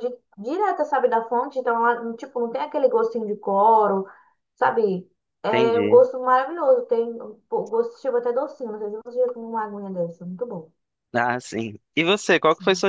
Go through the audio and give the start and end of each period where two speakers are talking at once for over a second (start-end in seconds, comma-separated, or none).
none